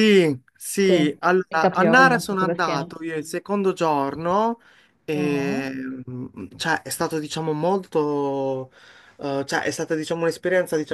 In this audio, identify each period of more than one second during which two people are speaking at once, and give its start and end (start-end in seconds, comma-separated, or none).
0.9-3.0